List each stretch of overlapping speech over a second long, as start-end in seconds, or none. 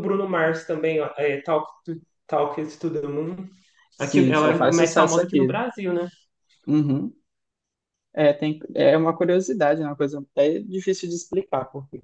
4.0-5.6